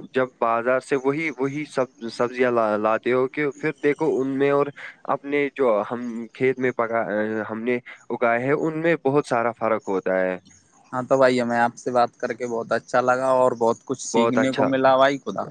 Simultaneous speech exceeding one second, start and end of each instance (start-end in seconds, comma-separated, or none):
none